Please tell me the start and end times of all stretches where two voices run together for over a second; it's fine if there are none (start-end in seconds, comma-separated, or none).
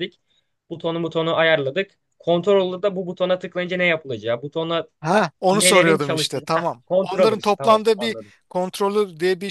5.5-8.3